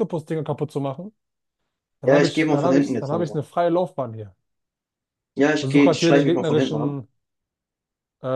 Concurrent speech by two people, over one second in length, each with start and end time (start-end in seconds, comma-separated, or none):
2.0-3.4, 5.6-7.0